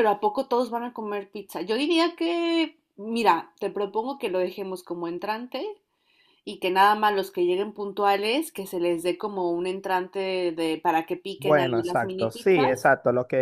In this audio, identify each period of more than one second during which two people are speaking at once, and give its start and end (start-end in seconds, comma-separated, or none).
11.4-12.9